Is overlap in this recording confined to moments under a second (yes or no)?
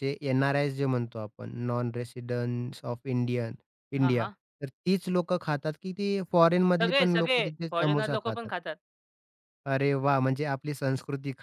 no